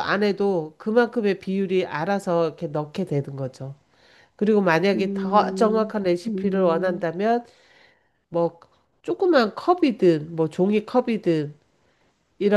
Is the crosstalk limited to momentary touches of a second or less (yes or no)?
no